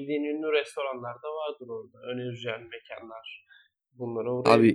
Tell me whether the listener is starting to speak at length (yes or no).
yes